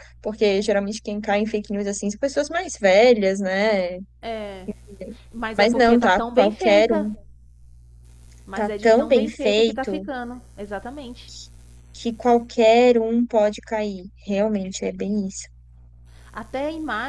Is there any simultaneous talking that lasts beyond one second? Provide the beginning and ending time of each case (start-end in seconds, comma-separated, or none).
5.6-7.1, 8.6-10.0